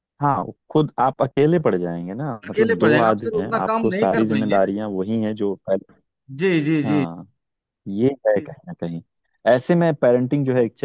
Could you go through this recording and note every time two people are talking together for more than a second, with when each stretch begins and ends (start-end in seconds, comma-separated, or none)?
2.5-4.6